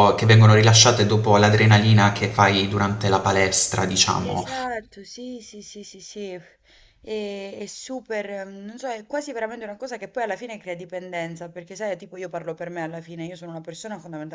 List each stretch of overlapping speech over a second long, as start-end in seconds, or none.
none